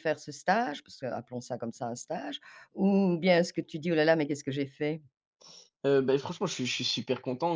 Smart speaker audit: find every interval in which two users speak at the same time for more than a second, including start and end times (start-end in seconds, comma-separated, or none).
none